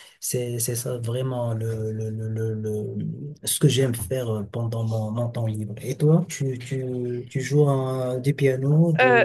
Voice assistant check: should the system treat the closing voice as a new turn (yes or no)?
yes